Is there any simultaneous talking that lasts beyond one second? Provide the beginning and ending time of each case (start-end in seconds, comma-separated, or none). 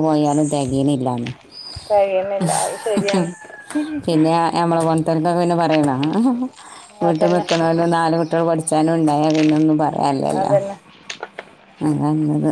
none